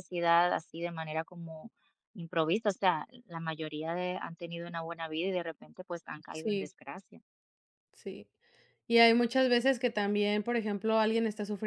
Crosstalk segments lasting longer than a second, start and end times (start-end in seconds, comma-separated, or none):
none